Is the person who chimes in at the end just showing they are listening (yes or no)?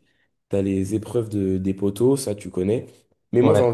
yes